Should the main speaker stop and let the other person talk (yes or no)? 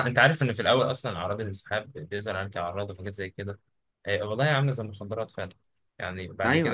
no